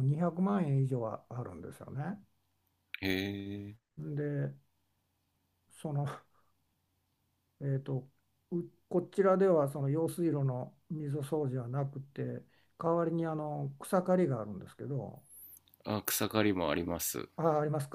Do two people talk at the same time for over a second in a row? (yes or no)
no